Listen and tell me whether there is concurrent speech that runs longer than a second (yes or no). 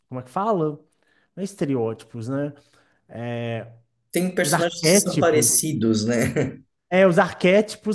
yes